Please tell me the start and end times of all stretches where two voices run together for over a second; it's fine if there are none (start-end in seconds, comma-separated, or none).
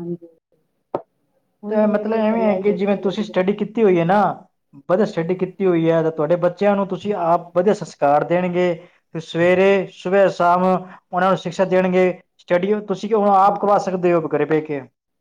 1.7-3.3